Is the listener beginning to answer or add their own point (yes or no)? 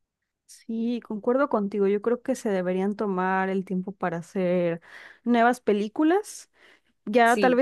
no